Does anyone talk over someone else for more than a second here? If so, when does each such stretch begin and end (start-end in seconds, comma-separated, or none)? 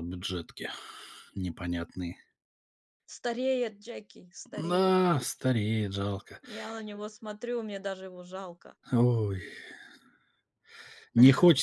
none